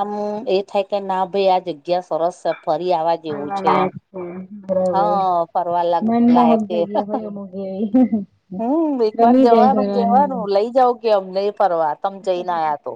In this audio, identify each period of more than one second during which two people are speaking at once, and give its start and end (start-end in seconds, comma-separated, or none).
9.2-10.4